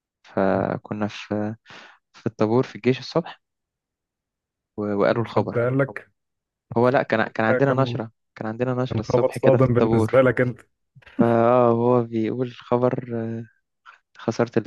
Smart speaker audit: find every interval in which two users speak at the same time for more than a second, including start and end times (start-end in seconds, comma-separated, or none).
8.9-10.3